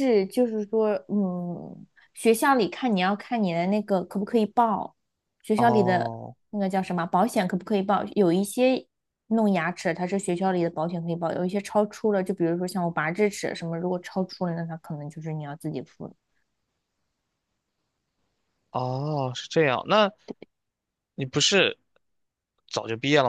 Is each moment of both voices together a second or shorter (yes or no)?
yes